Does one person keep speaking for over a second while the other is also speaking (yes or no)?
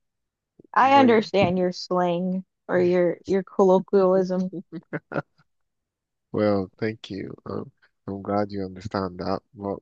no